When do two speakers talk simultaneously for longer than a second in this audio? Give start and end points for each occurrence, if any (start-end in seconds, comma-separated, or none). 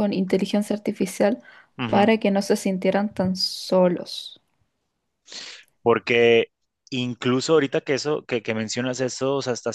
none